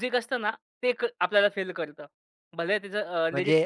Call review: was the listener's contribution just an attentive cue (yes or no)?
no